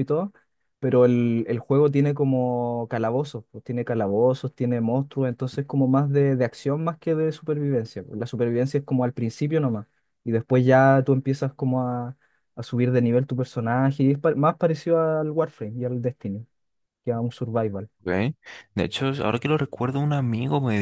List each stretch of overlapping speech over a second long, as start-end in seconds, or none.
none